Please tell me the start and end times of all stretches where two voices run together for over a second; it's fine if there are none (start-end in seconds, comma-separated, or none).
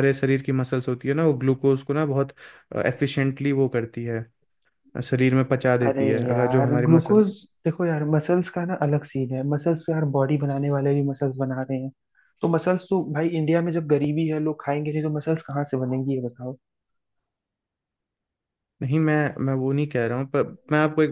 5.8-7.3